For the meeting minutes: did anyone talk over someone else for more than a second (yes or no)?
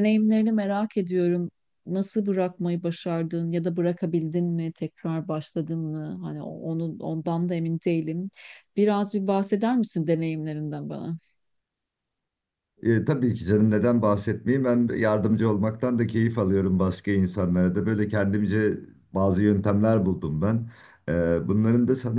no